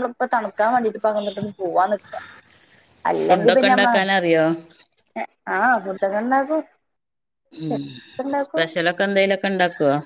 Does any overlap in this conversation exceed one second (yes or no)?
yes